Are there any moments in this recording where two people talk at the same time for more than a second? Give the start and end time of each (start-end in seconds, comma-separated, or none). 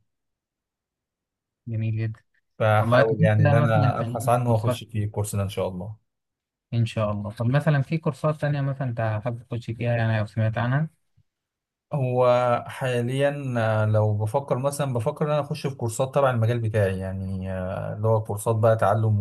2.8-4.8